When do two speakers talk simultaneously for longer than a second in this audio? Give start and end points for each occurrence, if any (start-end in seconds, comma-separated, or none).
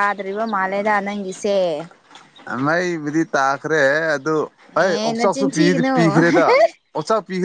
none